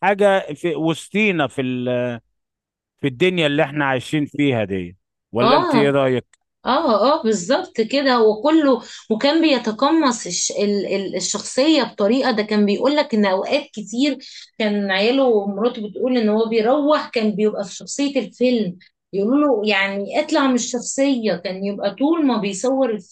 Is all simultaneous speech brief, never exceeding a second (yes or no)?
yes